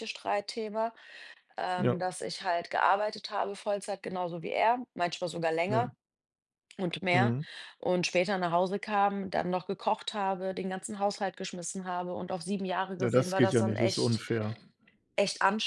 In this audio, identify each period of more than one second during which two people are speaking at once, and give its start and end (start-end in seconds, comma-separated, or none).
13.0-14.2